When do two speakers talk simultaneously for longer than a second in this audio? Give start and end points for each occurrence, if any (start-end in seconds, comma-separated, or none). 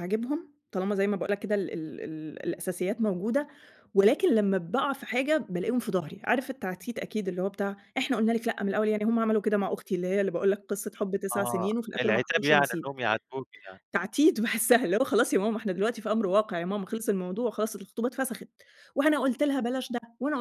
11.3-12.9